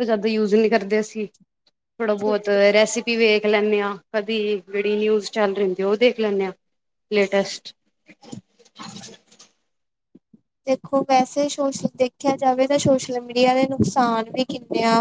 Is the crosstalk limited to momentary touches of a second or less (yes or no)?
yes